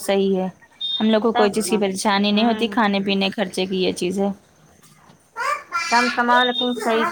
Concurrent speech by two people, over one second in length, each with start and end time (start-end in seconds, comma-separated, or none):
1.2-2.7